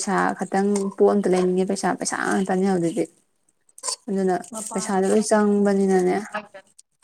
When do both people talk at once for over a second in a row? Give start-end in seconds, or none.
4.7-6.2